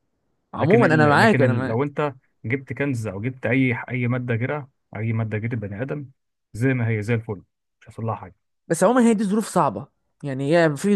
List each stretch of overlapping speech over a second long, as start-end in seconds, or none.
0.6-1.9